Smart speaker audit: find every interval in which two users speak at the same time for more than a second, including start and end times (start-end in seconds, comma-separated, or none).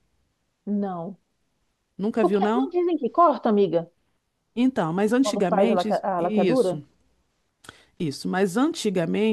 5.2-6.8